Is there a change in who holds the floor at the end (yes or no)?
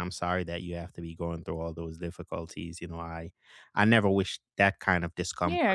yes